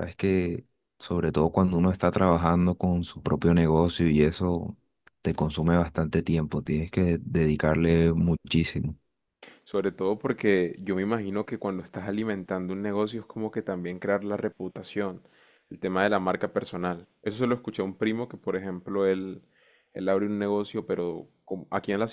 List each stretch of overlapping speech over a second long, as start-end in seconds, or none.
none